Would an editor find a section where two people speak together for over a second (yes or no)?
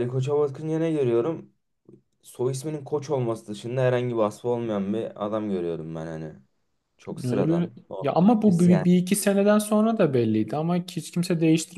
yes